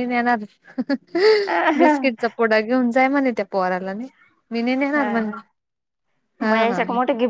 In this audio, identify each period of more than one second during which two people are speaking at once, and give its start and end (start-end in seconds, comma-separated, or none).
none